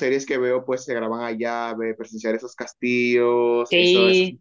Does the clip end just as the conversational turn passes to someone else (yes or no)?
no